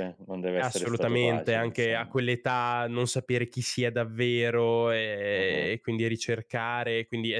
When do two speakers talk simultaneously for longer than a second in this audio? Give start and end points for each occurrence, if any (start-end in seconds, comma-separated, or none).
0.6-2.2